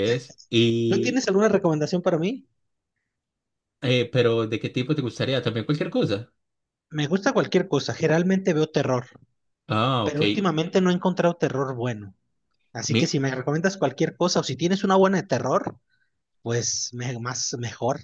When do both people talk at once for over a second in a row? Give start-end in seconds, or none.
none